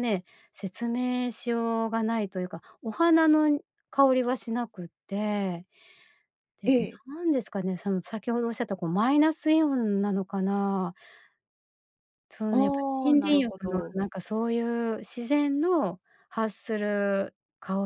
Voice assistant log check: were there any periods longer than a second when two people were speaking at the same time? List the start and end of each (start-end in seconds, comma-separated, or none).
12.5-14.0